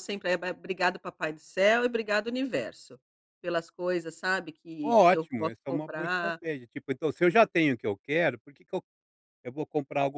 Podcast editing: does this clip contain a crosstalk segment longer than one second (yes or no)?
yes